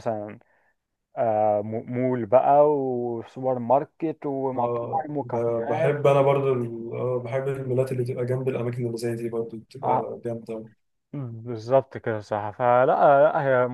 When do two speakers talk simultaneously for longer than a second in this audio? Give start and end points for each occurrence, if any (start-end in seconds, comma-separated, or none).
4.6-6.0